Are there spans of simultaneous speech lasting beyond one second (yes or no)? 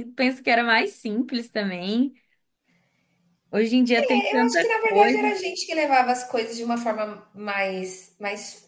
yes